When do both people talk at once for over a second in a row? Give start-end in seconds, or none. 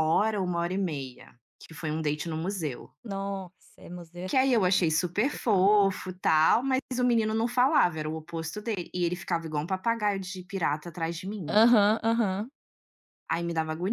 4.3-5.7